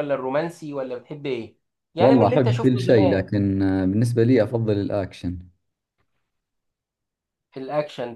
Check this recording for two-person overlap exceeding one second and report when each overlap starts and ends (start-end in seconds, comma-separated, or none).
2.0-3.3